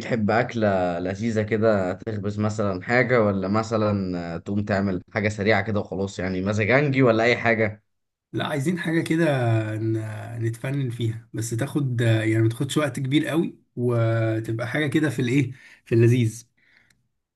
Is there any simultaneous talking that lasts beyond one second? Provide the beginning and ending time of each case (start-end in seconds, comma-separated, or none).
none